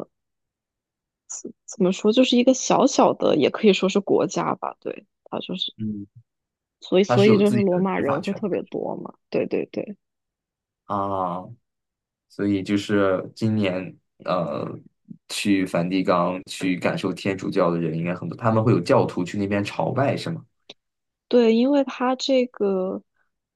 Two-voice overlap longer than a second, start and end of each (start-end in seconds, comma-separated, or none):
7.1-8.5